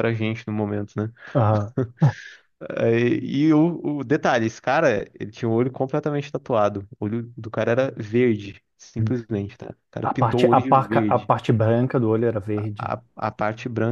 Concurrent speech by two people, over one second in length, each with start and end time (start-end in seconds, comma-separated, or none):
10.0-11.3